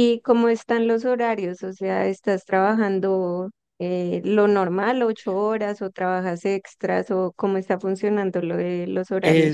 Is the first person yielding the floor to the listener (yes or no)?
yes